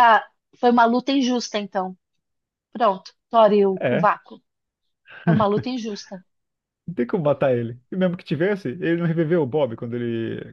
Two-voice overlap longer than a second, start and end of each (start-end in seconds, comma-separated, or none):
none